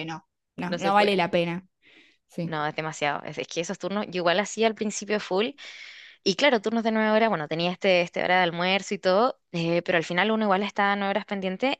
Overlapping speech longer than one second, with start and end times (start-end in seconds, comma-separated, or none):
none